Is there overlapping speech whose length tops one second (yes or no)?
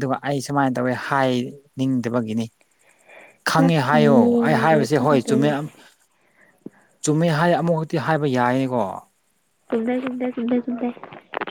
yes